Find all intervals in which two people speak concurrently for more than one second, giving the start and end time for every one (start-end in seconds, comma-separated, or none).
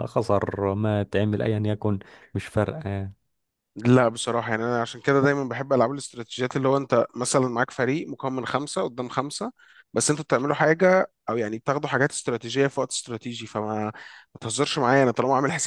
none